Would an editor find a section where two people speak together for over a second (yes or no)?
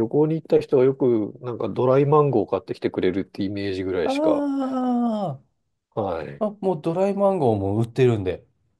no